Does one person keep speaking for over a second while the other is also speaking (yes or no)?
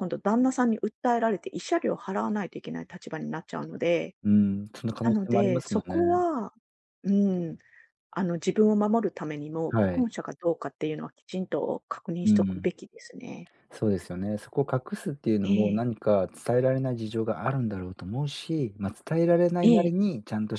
yes